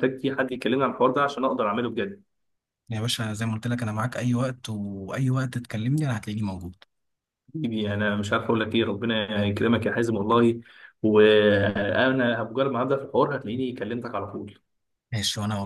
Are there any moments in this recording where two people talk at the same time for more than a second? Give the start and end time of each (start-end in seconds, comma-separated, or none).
none